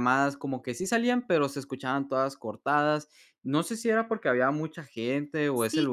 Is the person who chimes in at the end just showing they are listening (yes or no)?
no